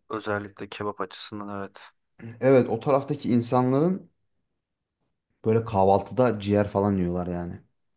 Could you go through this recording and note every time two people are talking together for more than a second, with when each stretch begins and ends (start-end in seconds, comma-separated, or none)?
none